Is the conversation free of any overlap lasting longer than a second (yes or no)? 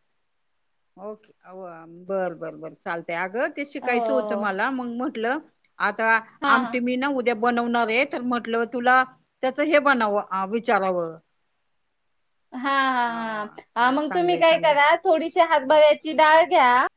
no